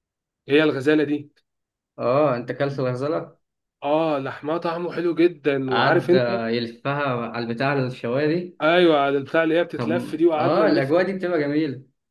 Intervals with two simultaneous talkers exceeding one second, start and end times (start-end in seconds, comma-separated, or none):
9.8-11.0